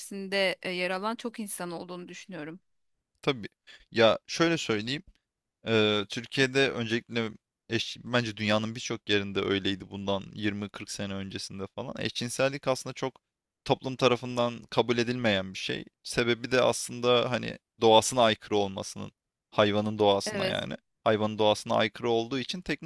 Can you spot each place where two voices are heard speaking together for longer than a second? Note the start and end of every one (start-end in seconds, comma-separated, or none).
none